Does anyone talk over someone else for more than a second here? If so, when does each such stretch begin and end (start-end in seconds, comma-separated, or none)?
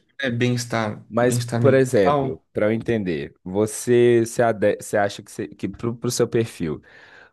1.1-2.4